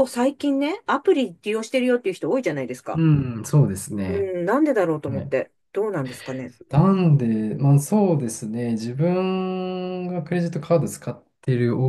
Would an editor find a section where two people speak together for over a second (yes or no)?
no